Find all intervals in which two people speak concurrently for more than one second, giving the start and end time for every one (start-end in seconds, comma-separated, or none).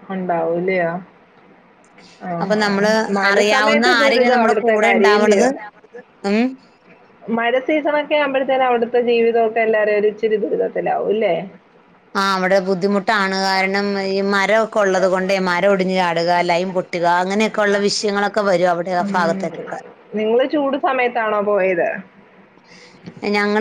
3.3-5.5